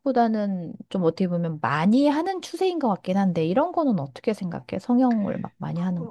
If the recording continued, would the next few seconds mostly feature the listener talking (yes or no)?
yes